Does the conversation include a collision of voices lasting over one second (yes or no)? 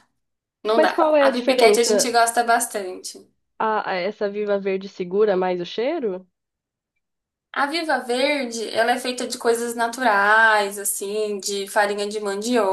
yes